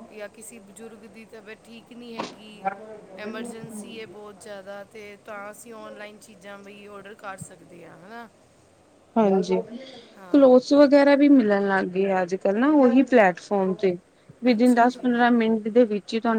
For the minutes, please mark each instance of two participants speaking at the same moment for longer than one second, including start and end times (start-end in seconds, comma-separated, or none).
none